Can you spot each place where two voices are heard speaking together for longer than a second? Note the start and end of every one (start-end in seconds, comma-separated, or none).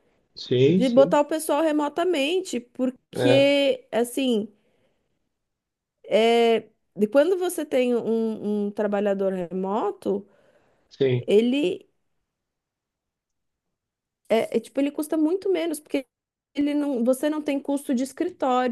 none